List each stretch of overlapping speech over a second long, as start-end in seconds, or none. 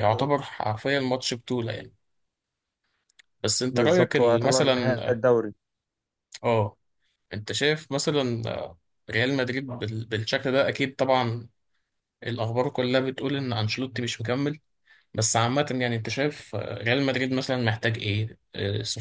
3.7-5.2